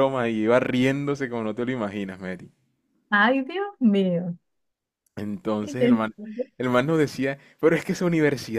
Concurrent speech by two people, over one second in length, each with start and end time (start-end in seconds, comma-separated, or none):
none